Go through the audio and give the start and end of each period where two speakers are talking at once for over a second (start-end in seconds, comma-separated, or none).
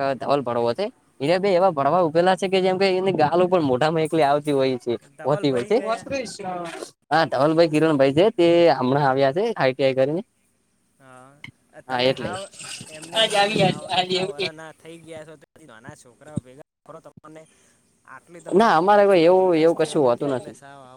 18.6-20.3